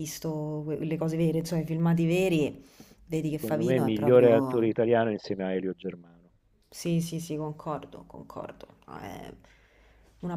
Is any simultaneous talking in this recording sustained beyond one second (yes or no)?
yes